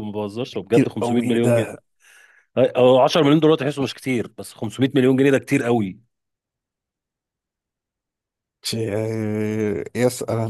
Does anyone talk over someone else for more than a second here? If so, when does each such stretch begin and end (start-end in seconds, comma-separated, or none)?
0.5-1.8